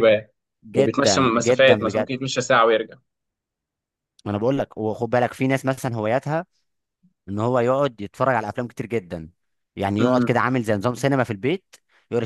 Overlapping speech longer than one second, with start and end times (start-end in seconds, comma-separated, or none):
0.7-2.1